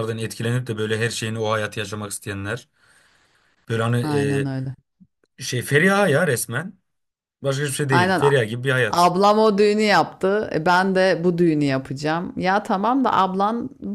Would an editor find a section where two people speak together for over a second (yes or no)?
no